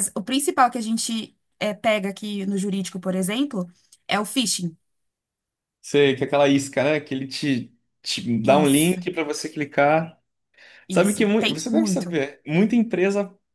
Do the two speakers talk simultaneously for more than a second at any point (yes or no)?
yes